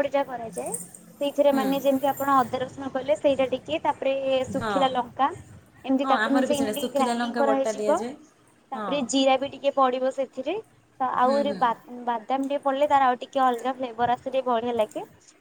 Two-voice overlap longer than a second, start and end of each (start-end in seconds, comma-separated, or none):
6.0-8.0